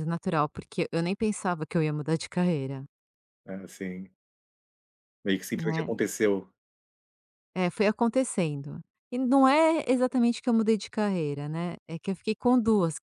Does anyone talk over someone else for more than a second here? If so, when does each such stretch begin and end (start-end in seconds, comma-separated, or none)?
none